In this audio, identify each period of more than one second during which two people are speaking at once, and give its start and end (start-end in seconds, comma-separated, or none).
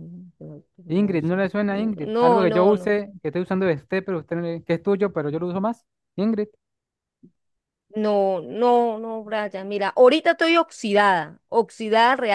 0.9-2.9